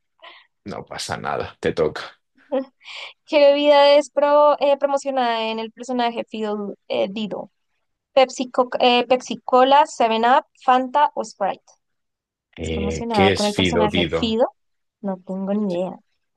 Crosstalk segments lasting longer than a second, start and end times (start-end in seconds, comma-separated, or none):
12.6-14.4